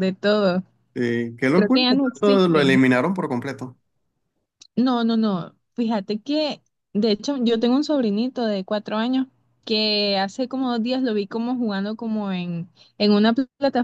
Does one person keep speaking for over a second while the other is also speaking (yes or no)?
yes